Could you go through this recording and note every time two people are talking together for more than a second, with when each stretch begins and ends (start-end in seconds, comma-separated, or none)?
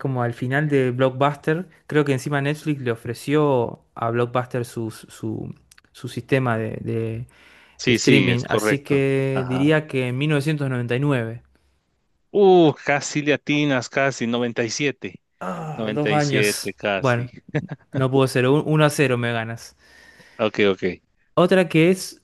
7.9-9.6, 15.8-17.3